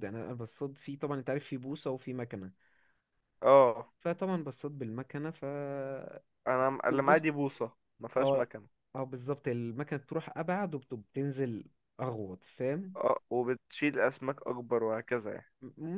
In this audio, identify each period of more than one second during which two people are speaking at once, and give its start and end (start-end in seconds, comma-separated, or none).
none